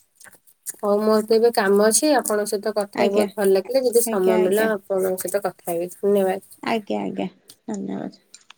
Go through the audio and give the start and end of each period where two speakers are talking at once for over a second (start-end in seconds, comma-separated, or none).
none